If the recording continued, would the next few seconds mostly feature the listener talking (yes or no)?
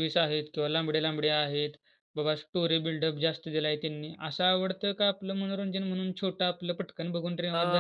yes